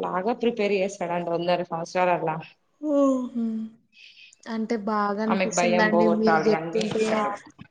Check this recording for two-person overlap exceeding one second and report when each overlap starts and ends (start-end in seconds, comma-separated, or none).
5.3-7.0